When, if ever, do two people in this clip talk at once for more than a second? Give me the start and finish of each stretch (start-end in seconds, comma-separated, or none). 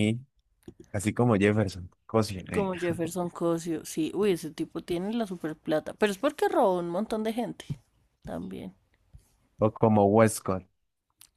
none